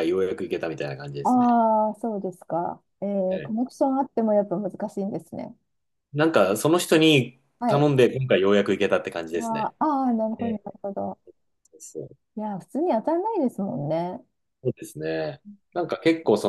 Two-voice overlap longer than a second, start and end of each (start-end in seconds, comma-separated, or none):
none